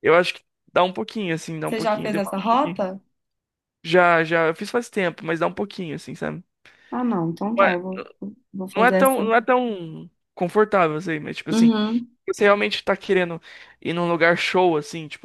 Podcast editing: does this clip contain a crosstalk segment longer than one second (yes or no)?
yes